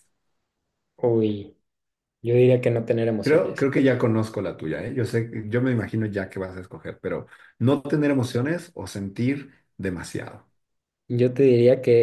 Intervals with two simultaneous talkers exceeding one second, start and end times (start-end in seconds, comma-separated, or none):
none